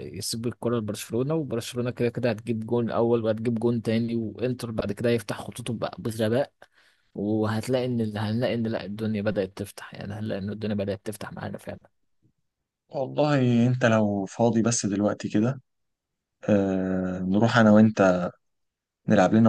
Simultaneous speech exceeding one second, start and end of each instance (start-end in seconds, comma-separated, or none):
none